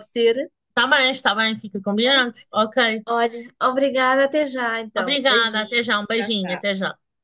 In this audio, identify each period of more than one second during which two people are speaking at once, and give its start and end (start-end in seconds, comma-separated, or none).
5.0-6.7